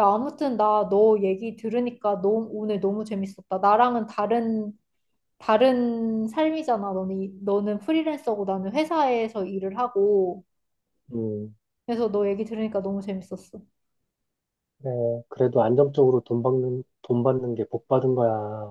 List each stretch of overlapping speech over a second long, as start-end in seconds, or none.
none